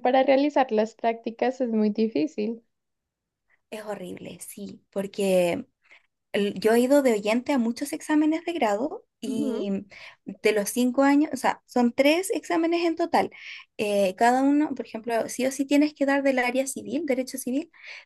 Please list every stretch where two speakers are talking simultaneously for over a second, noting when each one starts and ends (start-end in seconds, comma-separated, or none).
none